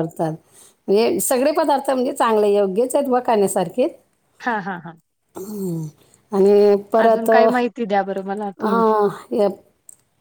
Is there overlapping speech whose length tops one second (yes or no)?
no